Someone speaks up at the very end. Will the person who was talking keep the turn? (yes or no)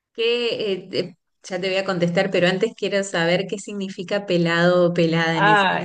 no